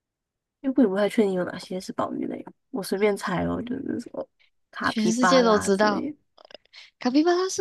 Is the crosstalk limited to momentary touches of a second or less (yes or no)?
no